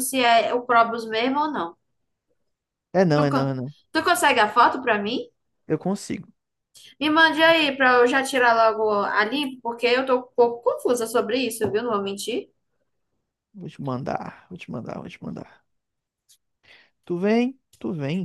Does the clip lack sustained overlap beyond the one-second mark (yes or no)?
yes